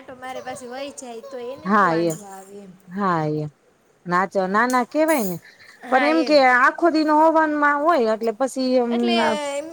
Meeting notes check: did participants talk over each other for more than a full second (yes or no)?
no